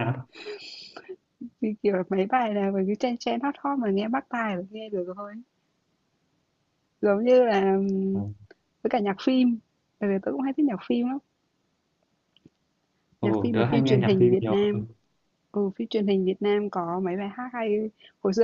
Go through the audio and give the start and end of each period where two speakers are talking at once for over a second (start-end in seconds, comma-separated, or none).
13.2-14.5